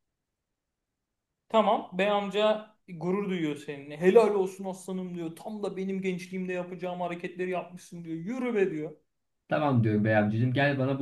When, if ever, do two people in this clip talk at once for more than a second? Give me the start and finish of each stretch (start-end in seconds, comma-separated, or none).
none